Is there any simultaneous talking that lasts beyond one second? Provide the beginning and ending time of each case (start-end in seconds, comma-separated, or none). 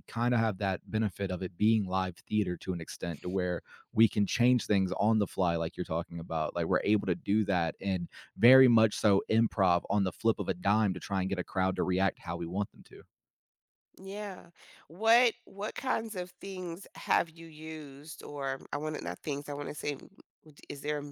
none